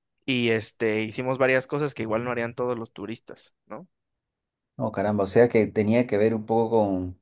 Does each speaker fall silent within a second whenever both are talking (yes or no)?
yes